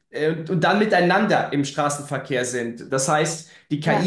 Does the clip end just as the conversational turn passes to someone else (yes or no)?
no